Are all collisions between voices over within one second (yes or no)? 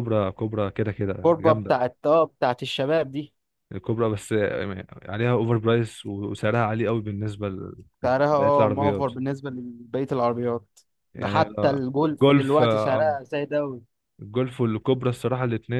no